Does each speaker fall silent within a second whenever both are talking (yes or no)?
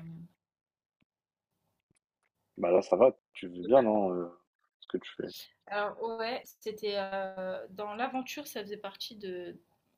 yes